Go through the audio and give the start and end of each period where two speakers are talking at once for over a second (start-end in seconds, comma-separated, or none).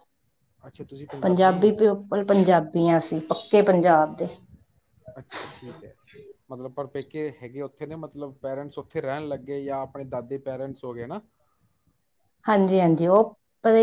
none